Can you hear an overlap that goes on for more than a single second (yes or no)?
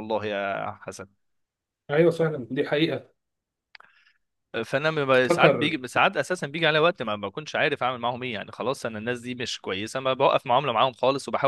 no